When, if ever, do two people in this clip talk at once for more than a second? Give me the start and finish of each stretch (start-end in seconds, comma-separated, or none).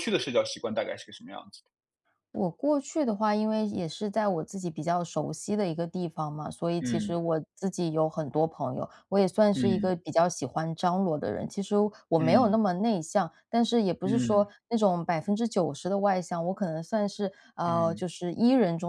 none